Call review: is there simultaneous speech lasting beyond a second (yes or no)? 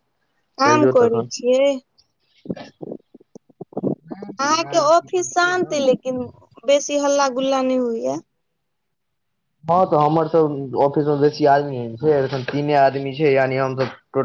yes